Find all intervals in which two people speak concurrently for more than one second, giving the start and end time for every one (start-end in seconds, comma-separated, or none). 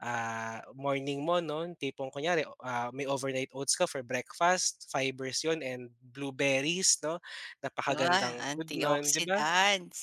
8.0-9.5